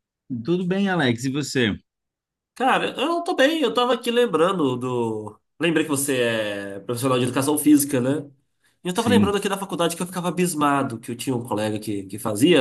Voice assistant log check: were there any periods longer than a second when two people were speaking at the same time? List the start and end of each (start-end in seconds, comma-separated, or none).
none